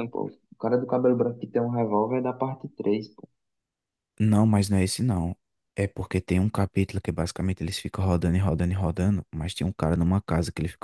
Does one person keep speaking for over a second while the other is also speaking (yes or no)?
no